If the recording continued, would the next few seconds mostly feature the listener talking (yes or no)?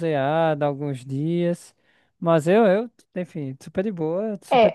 yes